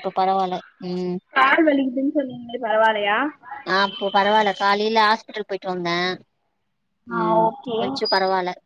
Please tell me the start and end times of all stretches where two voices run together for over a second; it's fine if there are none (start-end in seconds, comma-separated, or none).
none